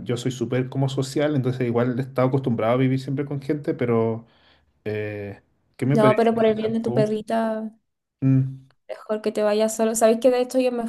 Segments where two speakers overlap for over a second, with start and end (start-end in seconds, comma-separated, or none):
5.9-7.2